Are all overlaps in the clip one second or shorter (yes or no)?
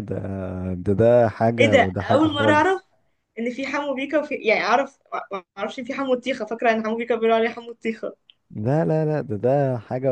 no